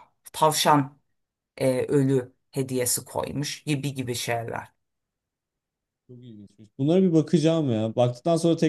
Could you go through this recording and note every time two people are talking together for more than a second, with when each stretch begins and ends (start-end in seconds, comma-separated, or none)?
none